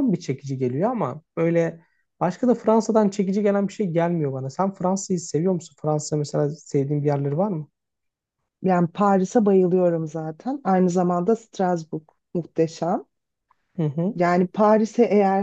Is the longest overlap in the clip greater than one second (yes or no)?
no